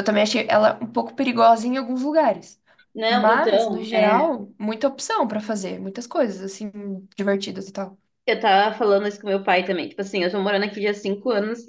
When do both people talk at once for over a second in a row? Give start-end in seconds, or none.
3.1-4.3